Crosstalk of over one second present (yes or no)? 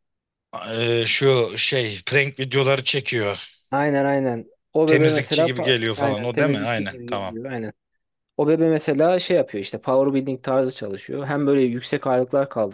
yes